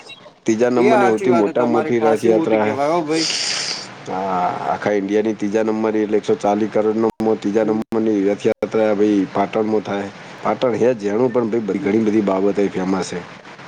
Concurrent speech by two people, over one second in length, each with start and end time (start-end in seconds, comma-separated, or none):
0.8-2.6